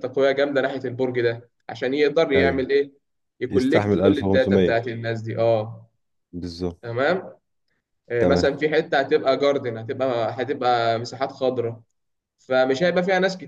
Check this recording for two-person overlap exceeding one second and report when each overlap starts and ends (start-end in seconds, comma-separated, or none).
3.5-4.8